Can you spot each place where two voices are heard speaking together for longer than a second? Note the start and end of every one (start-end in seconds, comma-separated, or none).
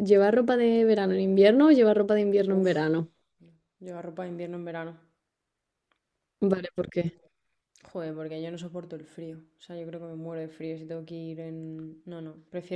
none